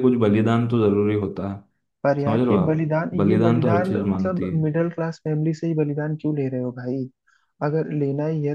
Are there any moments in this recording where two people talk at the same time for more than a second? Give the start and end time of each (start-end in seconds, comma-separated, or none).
2.2-4.6